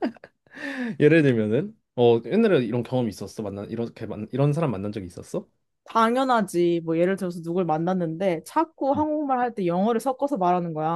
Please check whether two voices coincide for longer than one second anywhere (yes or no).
no